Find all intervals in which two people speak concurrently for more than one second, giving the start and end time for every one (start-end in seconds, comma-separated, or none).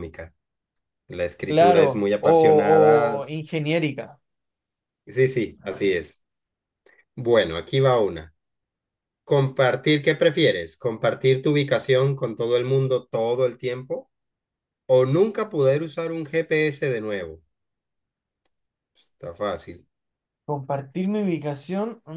1.5-3.2